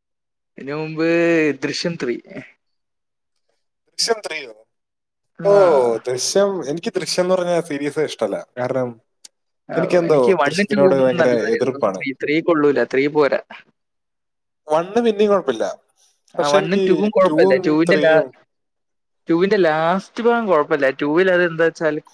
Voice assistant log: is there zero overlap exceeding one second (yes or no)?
no